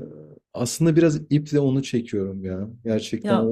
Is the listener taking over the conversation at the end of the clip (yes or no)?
no